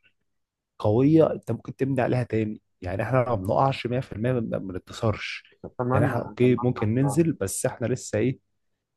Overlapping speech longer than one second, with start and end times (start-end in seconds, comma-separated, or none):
5.9-7.2